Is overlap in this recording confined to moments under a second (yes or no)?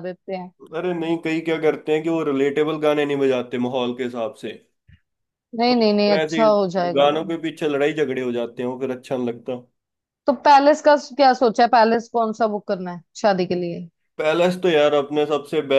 no